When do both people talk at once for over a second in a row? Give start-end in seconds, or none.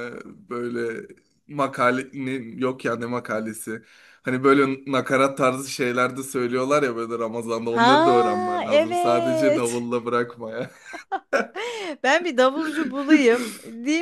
7.7-9.9